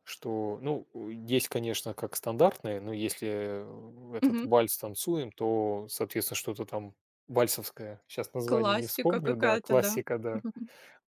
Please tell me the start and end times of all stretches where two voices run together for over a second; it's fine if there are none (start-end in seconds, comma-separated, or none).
8.4-10.4